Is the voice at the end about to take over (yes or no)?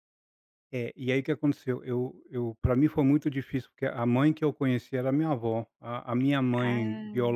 no